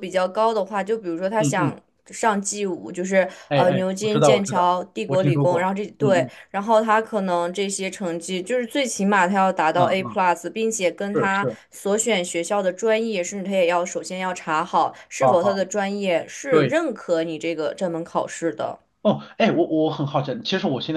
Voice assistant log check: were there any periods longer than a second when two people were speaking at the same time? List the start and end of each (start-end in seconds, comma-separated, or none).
3.5-6.3